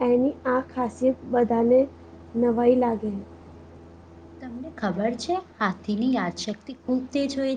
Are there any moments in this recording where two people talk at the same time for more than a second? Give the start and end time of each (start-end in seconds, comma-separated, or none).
none